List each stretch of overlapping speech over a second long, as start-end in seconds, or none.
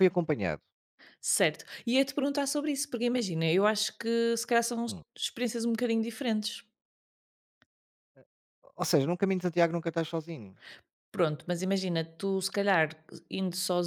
none